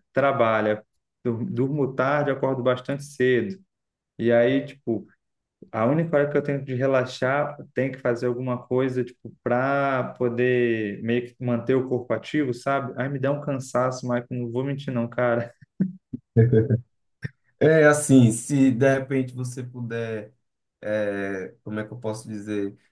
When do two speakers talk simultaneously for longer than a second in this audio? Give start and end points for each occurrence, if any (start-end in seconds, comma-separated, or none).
none